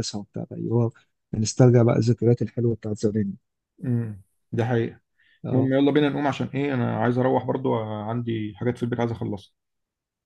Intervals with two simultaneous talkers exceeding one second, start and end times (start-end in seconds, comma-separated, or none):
none